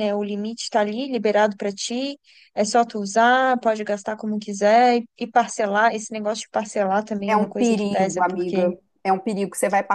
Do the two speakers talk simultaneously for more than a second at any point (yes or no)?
yes